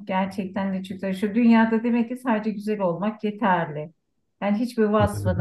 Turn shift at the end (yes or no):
no